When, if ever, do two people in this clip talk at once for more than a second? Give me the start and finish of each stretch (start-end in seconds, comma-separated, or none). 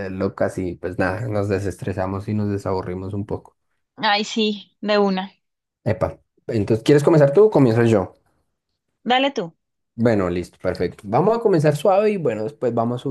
none